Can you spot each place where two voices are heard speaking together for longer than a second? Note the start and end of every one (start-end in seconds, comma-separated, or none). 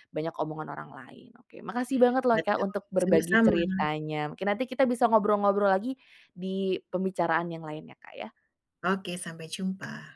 2.3-3.9